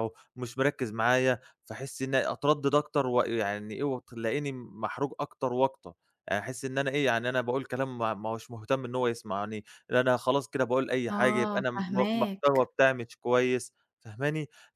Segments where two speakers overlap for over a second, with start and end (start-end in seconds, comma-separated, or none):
11.1-12.7